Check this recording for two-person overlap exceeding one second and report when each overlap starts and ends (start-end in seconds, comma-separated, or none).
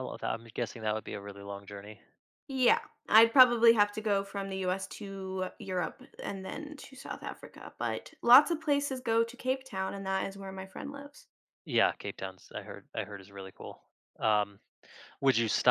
none